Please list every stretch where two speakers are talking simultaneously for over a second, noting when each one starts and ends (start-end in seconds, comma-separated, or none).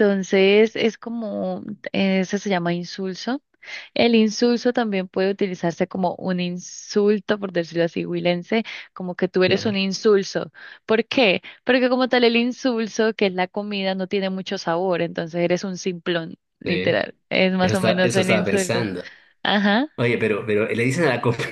17.6-18.9